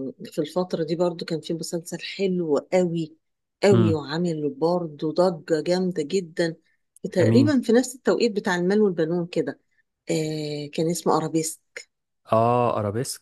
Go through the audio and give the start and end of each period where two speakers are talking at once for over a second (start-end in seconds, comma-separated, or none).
none